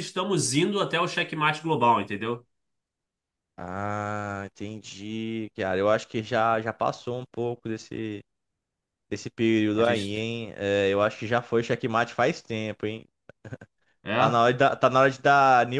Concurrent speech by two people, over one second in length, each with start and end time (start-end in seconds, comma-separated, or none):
none